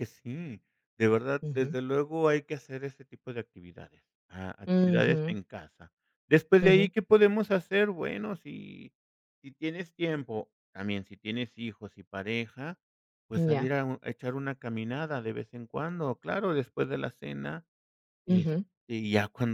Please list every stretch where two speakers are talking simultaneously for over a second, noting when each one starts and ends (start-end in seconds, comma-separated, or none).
none